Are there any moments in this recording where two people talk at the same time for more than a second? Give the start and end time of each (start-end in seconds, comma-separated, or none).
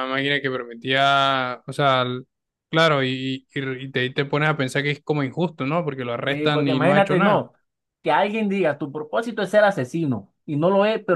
6.2-7.4